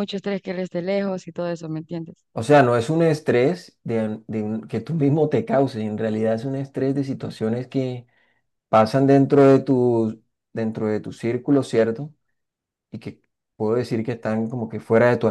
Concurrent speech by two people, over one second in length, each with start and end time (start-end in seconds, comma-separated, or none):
none